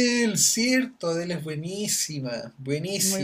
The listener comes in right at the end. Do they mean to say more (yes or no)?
no